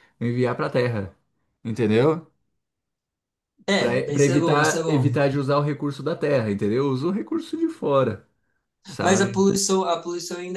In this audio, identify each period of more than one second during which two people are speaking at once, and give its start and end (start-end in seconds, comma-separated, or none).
3.8-5.2